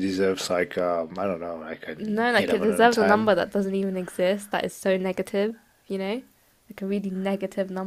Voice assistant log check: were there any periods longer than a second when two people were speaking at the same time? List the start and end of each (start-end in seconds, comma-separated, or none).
2.0-3.3